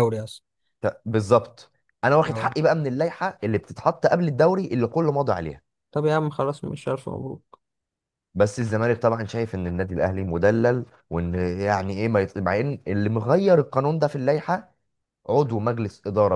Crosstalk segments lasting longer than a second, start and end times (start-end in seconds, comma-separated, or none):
none